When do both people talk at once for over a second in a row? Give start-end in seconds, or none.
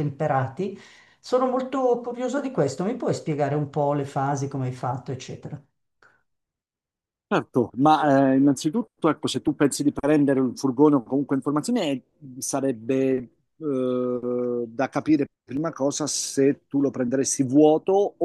none